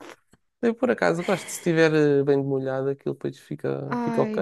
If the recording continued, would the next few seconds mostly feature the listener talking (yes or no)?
yes